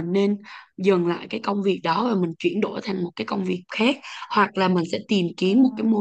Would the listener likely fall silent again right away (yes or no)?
yes